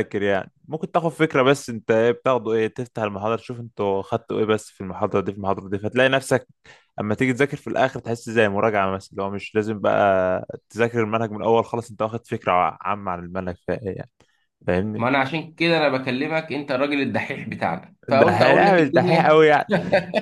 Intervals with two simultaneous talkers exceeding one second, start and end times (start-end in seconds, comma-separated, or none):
18.1-19.4